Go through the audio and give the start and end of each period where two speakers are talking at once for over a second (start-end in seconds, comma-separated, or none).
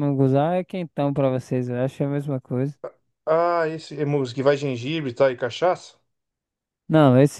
none